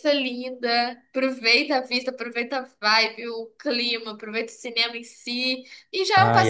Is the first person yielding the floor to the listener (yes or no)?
no